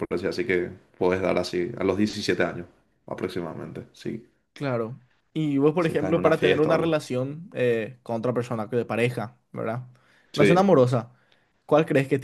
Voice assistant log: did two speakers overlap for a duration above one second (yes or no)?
yes